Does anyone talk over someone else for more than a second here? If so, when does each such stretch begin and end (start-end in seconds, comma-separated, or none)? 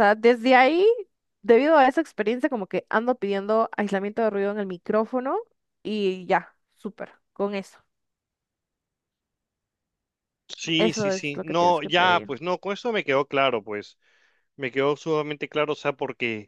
10.8-12.3